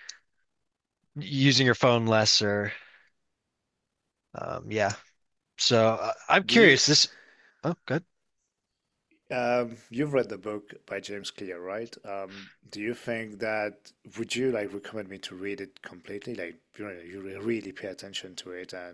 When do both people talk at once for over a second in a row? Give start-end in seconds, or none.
none